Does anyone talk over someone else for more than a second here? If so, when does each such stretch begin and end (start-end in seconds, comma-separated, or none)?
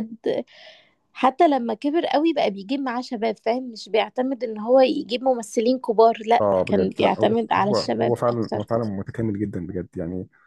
6.4-8.7